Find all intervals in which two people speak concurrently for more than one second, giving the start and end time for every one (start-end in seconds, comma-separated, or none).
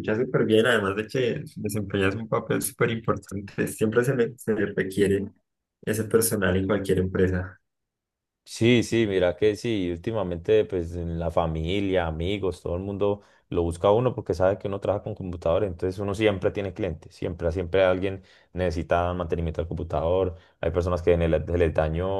none